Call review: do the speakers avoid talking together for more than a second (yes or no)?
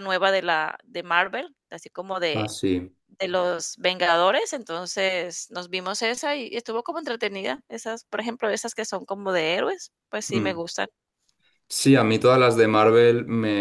yes